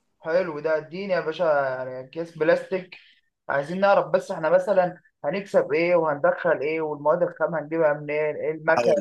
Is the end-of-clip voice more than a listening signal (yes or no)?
yes